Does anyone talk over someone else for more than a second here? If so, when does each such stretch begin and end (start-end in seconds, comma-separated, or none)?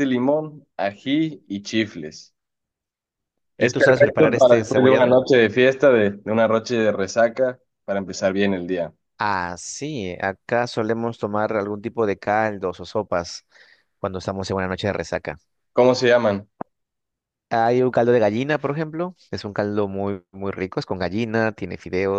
3.6-5.2